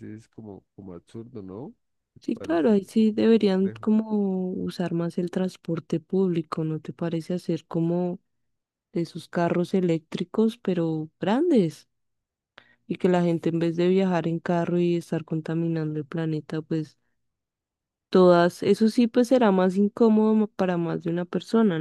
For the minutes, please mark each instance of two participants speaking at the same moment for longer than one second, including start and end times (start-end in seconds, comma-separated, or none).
2.2-3.8